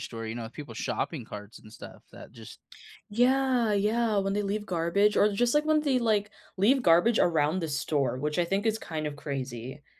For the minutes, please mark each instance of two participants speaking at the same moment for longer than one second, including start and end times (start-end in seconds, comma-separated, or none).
none